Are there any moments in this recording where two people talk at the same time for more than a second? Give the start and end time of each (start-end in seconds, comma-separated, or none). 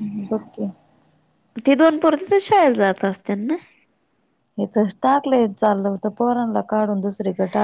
none